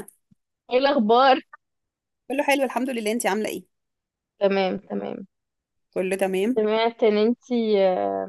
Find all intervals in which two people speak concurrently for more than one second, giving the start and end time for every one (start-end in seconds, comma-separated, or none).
none